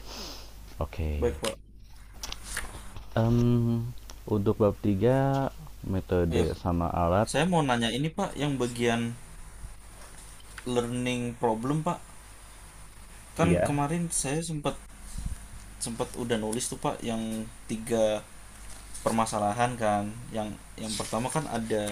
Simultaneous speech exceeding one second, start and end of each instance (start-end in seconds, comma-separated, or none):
none